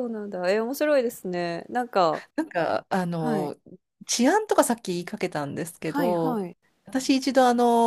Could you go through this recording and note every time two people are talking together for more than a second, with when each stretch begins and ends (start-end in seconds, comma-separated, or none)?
none